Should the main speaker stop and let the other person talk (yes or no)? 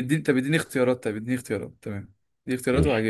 yes